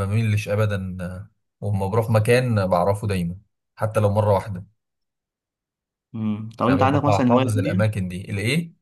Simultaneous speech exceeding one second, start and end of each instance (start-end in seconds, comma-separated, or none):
6.7-8.0